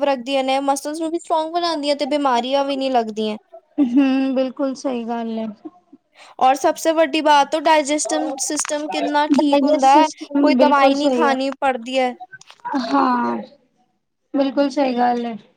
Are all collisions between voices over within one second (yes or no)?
no